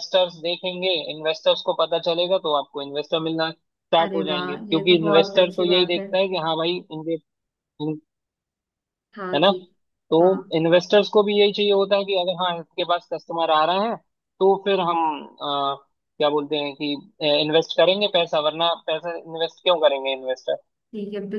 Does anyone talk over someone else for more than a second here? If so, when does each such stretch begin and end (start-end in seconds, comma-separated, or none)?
4.0-6.1